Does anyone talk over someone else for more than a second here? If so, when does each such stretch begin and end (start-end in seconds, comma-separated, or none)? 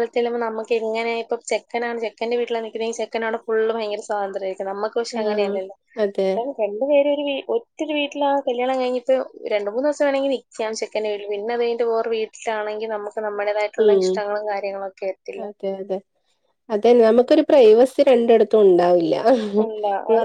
none